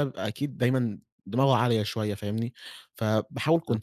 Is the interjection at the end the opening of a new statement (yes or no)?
no